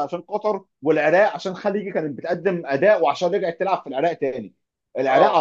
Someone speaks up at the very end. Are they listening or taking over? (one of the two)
listening